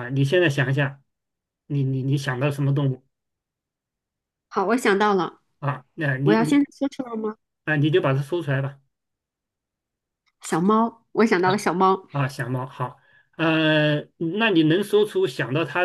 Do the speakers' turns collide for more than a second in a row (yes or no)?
no